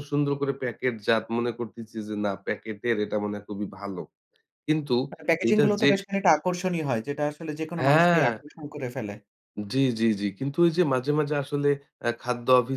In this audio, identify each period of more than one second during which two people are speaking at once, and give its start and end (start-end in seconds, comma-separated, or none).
none